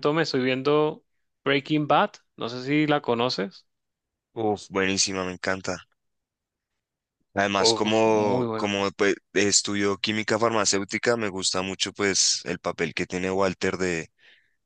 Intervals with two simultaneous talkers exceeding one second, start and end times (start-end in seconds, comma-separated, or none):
7.6-8.8